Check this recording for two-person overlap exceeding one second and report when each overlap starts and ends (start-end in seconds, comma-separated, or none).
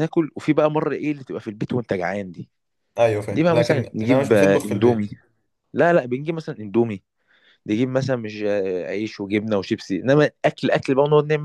3.3-5.0